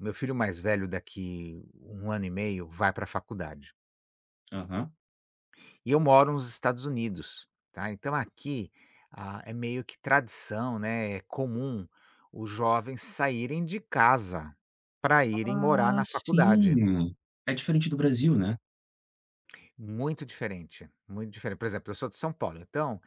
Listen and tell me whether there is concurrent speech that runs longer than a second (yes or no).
yes